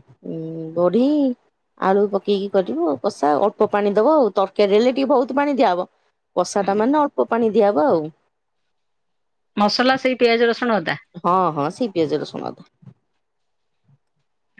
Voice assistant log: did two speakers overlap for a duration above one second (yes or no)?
no